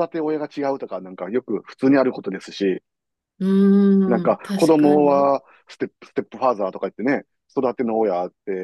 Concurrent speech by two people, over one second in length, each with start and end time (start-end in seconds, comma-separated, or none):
4.0-5.3